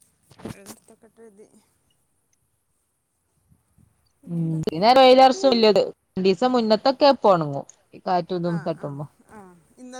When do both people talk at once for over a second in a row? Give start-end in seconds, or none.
none